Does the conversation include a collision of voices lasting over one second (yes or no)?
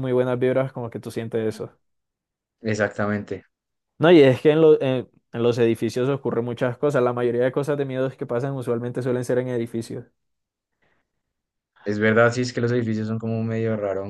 no